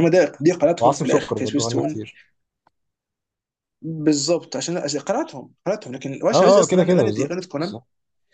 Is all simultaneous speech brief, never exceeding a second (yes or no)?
no